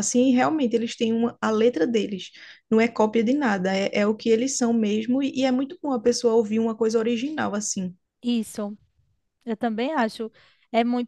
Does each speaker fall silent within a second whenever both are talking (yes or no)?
yes